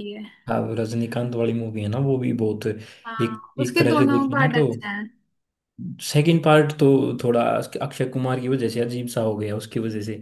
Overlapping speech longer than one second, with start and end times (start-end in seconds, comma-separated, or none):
3.1-4.6